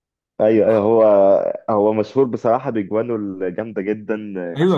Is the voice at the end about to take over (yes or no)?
yes